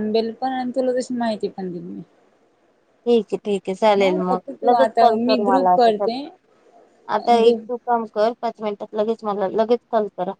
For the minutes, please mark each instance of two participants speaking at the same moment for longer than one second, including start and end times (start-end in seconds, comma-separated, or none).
4.0-6.1